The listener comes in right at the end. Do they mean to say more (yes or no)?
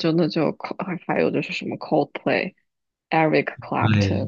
no